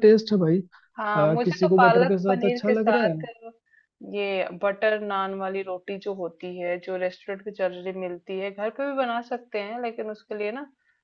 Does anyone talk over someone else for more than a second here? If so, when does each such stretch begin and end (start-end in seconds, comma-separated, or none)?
1.0-3.1